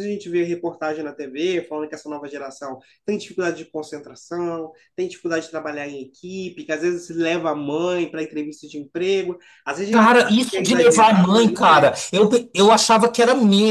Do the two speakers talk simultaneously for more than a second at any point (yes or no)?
yes